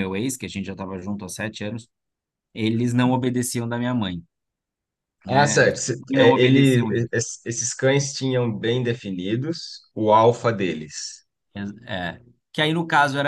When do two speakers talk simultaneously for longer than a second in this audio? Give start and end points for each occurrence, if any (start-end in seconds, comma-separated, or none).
5.3-6.9